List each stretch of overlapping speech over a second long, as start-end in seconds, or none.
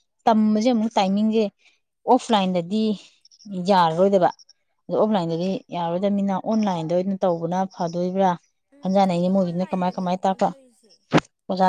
9.1-10.5